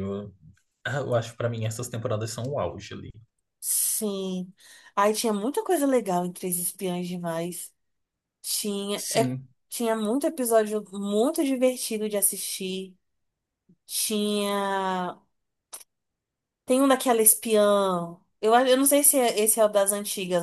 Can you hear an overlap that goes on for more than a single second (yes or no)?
no